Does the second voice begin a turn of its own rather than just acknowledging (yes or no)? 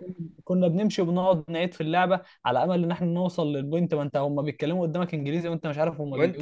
yes